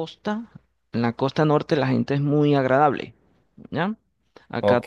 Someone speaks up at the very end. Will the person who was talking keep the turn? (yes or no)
no